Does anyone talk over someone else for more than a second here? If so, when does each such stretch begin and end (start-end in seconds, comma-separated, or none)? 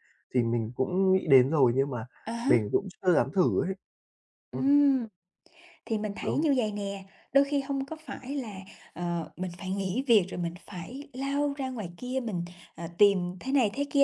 none